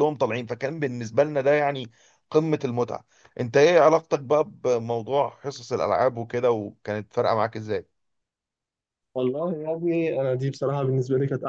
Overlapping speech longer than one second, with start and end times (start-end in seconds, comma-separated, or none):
none